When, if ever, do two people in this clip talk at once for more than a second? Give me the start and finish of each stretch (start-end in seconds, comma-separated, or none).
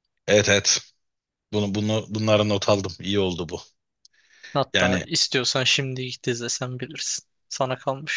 none